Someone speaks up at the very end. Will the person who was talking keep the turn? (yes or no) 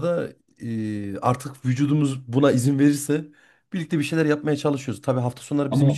yes